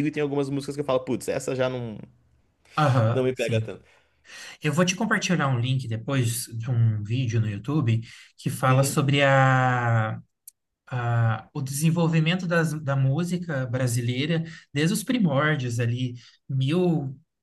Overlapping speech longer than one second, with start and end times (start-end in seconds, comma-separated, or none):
none